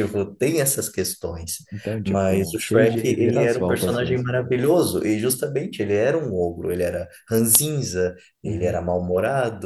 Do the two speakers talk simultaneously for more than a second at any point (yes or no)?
yes